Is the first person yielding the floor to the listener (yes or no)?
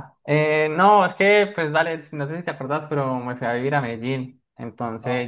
no